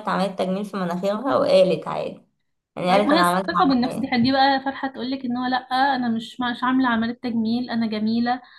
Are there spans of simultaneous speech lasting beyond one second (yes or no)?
yes